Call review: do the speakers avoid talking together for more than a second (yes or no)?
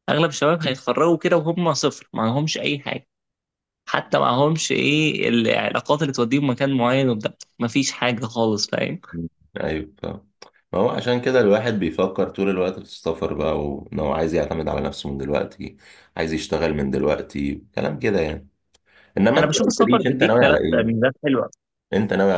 no